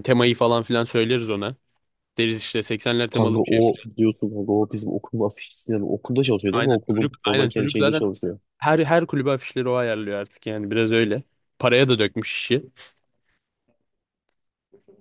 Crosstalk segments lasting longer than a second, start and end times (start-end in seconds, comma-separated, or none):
6.5-8.1